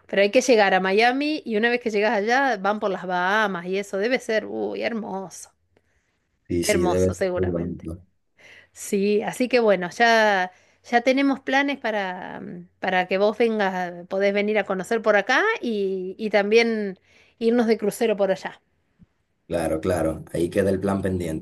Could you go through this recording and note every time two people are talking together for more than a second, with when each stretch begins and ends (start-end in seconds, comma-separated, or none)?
6.6-7.9